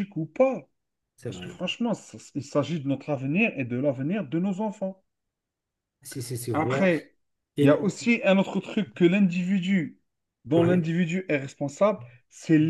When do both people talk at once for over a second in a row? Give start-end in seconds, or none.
none